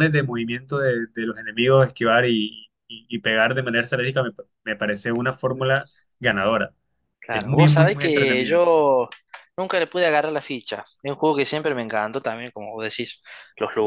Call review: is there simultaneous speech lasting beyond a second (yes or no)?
yes